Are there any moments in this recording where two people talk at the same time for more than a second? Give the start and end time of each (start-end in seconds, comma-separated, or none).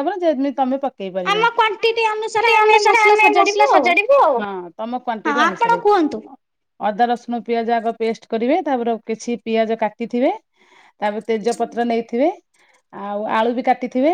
none